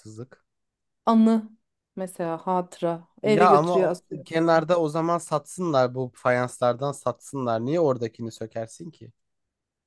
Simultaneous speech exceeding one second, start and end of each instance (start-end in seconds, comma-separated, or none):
3.2-4.7